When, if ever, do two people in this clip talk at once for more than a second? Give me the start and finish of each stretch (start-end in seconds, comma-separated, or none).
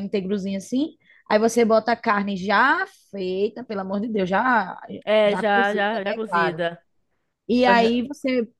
5.2-6.6